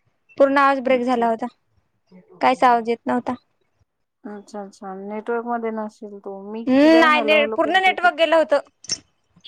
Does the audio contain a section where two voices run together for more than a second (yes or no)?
yes